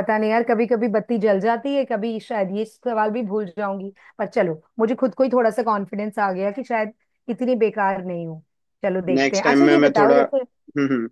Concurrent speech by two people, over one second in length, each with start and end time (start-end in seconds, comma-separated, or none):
9.2-10.4